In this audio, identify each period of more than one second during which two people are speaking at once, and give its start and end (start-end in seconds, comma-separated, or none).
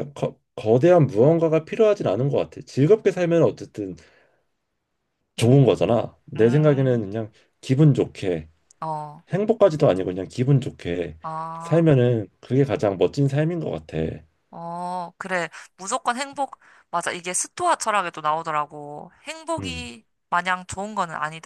5.4-7.0